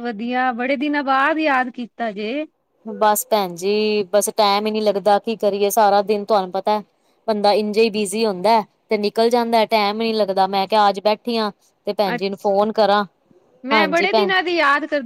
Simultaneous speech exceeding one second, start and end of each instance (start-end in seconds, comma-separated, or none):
none